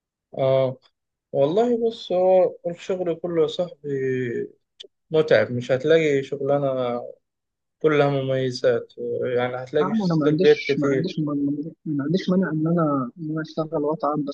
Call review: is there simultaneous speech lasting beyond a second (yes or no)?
yes